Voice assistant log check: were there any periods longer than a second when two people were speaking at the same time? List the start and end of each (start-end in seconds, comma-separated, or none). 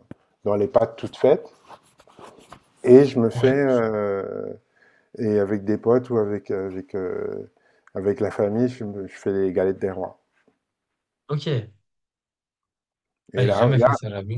none